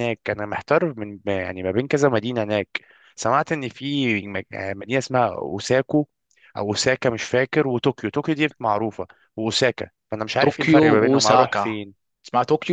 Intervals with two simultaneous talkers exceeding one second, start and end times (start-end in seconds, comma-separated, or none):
10.4-11.8